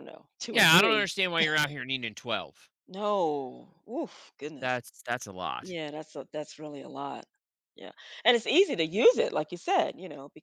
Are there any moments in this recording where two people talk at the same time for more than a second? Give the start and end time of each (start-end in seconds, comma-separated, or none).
none